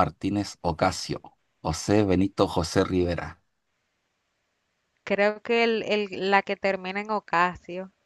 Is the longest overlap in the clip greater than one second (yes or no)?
no